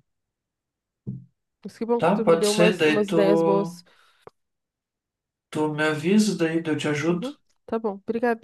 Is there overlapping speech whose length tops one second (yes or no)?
yes